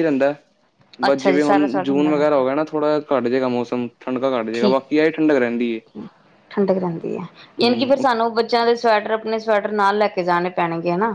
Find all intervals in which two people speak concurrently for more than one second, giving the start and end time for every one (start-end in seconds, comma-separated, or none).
1.1-2.4